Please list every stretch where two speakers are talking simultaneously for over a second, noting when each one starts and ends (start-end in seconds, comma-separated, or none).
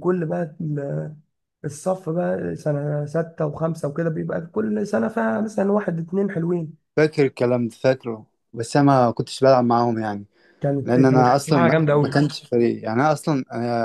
10.8-12.2